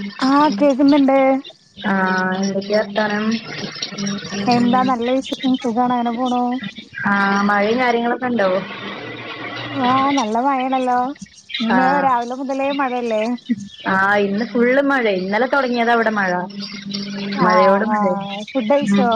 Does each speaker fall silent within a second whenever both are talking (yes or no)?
yes